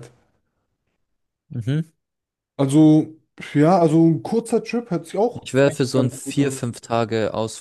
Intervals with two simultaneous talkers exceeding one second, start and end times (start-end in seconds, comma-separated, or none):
5.4-6.6